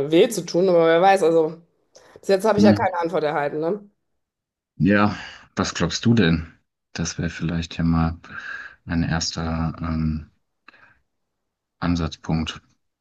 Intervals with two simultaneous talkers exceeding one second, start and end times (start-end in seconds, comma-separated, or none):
none